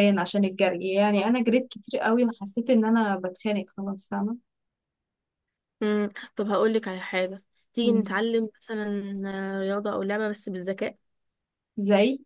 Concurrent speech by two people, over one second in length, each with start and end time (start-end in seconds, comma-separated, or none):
none